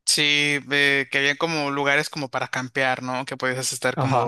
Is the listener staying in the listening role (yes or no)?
yes